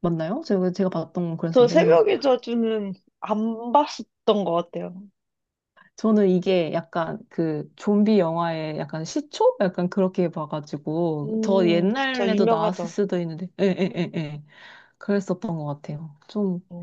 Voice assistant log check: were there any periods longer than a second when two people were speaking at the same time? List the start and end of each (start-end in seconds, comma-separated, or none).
11.2-12.9